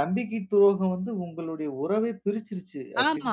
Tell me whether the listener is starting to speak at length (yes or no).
yes